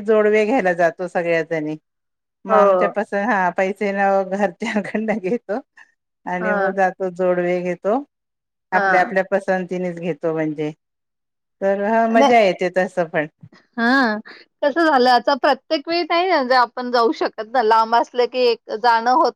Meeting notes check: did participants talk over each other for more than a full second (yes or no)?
no